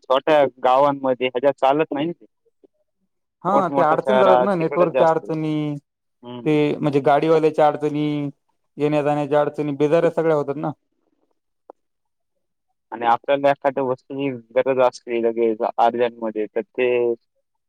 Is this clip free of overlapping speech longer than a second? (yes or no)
no